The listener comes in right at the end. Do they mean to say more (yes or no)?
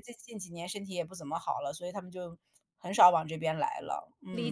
yes